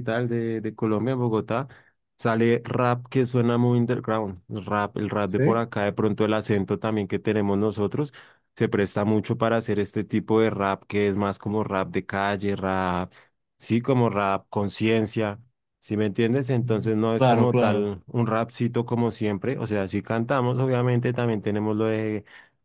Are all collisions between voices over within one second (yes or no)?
no